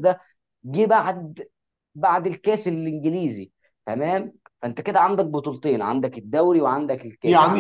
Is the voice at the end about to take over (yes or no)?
yes